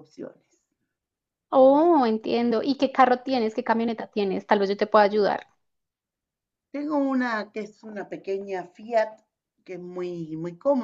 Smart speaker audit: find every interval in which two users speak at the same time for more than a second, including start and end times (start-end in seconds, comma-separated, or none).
none